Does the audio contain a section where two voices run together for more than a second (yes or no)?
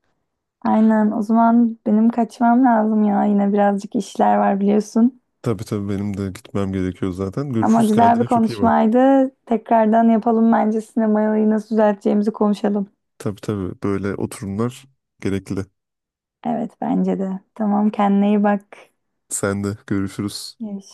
yes